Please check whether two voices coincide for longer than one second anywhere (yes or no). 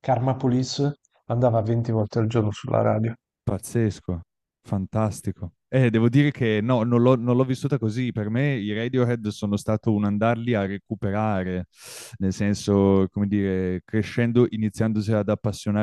no